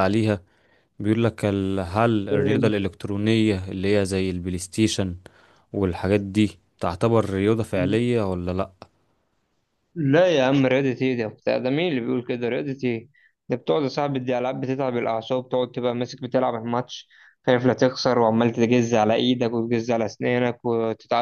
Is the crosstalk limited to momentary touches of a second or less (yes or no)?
yes